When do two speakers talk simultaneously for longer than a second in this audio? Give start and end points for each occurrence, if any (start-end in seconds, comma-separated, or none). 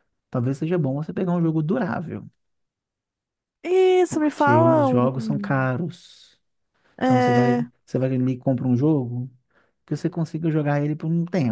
4.1-5.7